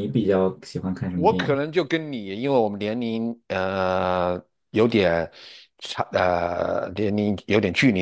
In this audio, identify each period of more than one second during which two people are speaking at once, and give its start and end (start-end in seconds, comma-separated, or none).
none